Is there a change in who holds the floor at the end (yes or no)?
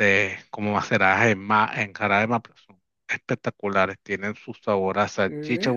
no